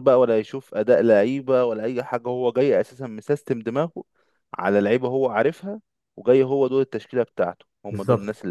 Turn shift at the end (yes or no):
yes